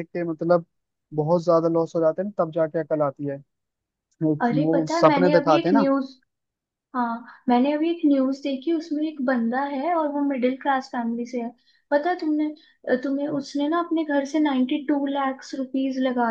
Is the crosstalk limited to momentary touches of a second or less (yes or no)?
no